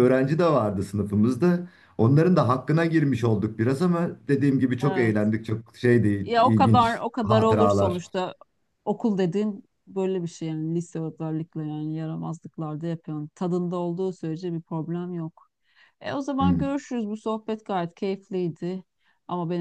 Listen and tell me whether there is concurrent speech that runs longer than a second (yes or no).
yes